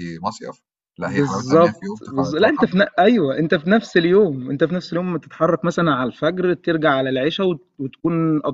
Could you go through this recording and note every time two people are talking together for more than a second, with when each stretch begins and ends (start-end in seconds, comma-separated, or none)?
1.0-2.5